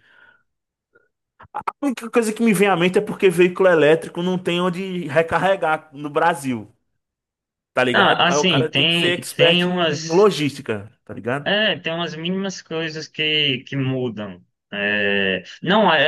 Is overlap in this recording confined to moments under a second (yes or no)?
no